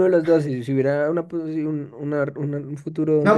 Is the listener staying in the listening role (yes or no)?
no